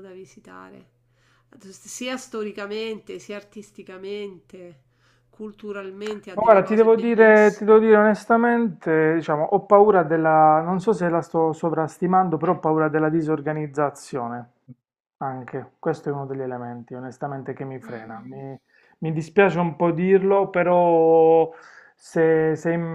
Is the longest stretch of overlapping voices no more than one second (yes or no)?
no